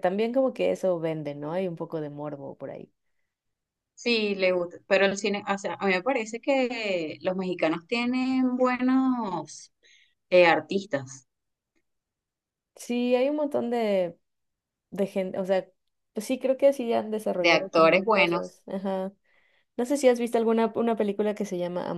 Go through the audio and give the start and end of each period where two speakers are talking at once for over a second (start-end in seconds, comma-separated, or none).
17.4-18.6